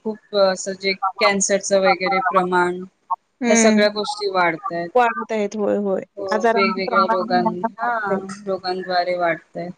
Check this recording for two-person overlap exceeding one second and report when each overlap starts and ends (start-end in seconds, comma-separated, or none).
6.5-8.2